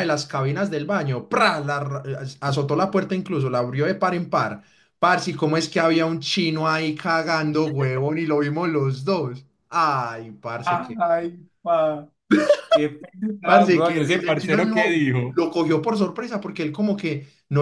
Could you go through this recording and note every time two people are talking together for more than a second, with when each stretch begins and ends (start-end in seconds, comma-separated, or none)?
13.4-15.4